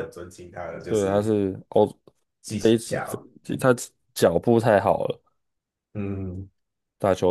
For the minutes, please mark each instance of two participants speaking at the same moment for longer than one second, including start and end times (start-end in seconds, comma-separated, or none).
none